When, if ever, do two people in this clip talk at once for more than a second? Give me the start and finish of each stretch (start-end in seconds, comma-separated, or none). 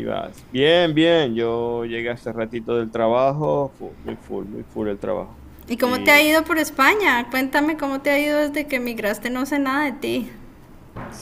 none